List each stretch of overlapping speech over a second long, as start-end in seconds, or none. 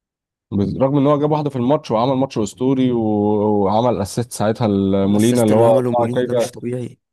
5.0-6.5